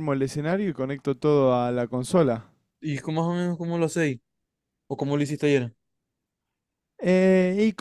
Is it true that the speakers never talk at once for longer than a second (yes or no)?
yes